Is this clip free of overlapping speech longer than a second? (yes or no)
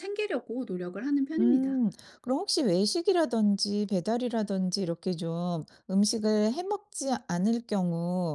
yes